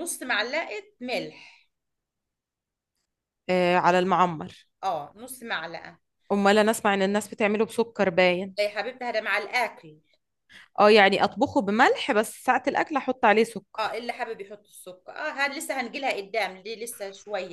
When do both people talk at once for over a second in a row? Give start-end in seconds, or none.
none